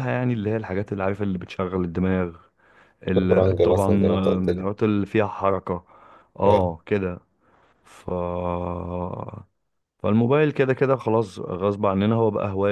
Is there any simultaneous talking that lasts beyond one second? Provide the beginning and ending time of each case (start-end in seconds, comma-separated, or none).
3.1-4.7